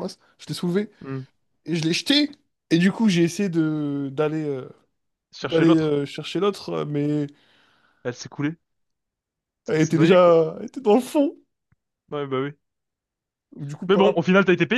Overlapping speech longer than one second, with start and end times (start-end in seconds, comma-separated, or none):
none